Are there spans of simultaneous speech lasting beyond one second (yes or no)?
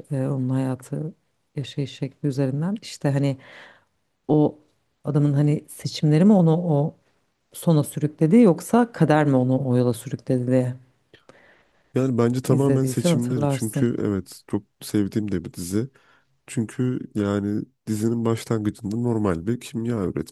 yes